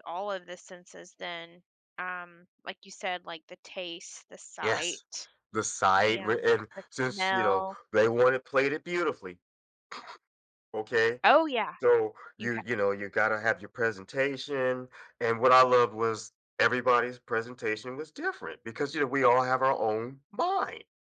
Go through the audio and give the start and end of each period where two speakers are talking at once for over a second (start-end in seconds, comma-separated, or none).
6.0-7.8